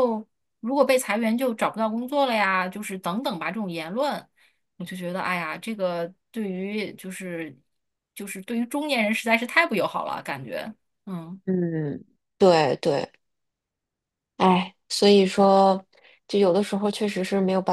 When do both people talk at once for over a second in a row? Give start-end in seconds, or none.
none